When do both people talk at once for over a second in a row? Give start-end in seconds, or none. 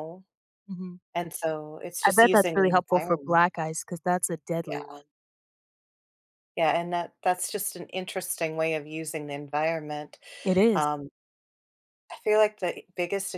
2.0-3.4